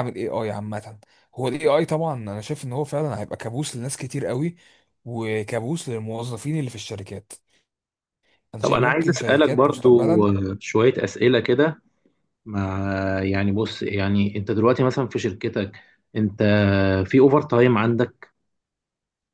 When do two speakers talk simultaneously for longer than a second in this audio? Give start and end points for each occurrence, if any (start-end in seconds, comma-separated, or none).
8.6-10.3